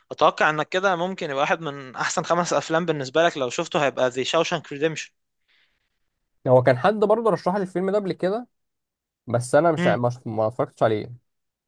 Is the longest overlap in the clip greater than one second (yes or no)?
no